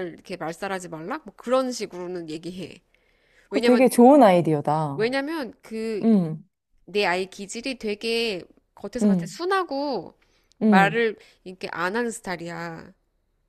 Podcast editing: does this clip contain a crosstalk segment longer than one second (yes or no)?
no